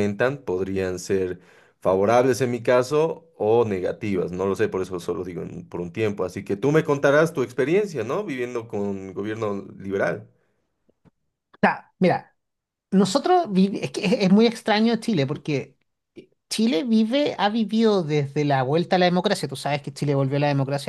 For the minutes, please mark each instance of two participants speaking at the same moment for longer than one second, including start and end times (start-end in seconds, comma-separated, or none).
none